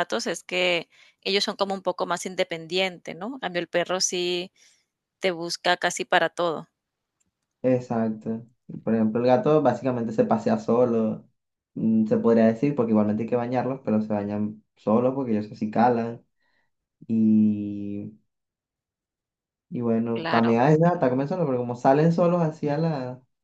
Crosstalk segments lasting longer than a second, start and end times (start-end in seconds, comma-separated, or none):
none